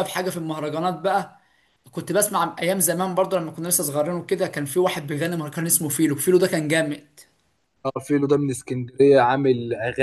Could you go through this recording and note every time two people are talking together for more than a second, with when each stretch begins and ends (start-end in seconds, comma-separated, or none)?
none